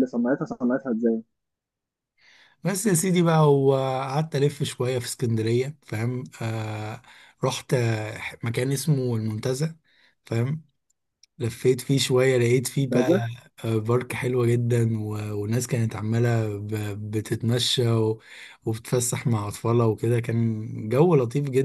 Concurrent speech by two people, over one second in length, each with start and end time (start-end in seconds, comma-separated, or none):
none